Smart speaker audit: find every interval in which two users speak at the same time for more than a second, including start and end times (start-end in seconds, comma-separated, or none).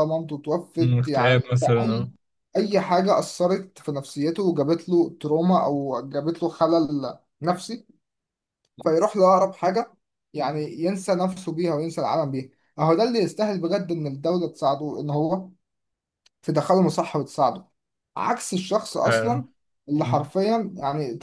0.8-2.1